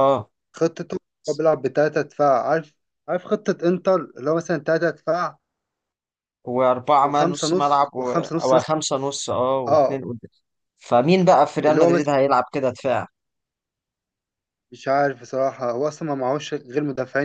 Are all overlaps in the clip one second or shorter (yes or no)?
no